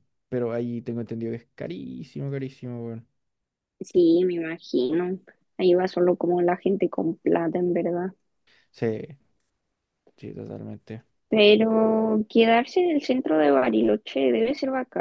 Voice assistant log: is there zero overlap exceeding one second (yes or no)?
yes